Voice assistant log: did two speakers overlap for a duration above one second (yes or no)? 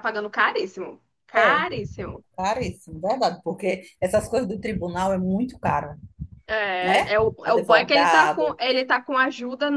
yes